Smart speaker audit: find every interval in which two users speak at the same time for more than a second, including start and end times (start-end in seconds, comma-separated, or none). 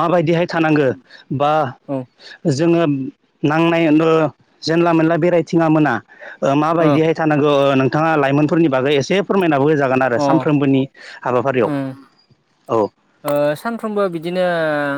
none